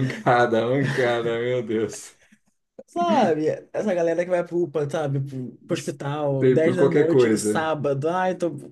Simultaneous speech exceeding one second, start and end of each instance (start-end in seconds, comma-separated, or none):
6.4-7.7